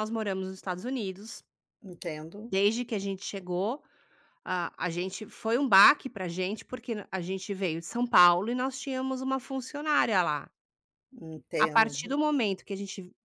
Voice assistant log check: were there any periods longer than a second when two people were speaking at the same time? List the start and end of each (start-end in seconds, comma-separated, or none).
none